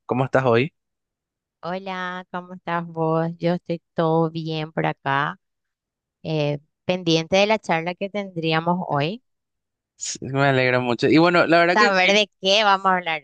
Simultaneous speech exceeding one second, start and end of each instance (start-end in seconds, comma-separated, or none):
none